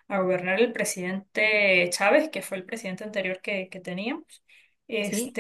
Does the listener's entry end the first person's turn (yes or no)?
no